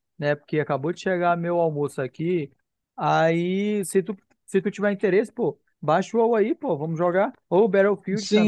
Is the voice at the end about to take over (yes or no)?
yes